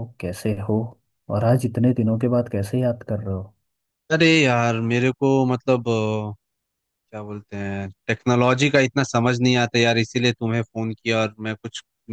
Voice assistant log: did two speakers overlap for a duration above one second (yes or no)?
no